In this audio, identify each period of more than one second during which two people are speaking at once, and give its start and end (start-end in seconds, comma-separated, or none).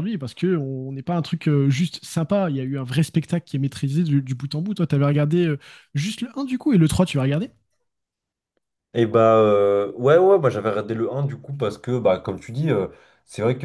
none